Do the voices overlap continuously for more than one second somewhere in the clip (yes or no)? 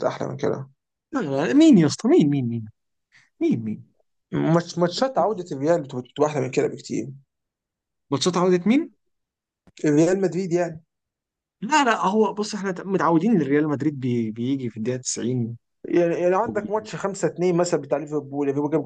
no